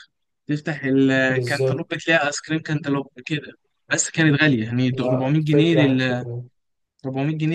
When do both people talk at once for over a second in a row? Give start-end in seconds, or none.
4.9-6.2